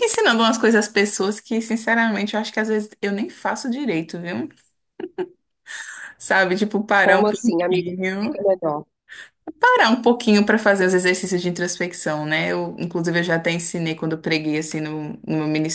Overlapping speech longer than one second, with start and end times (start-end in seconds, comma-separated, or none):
7.0-8.4